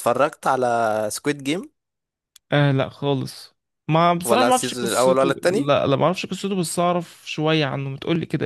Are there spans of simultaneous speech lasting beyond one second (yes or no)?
yes